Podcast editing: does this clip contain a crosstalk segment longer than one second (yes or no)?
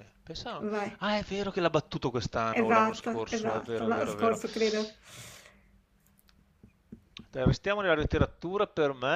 yes